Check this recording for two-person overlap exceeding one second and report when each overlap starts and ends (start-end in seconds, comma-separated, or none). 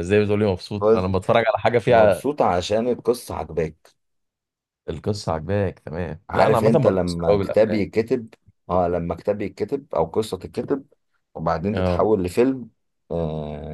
6.3-7.8